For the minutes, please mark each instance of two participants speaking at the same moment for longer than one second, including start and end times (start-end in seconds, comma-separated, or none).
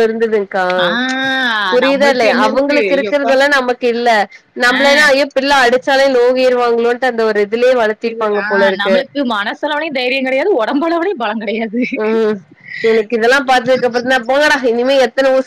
1.9-3.3